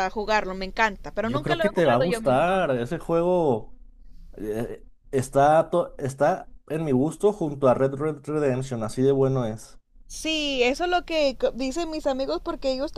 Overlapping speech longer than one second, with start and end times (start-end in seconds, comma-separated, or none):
1.2-2.7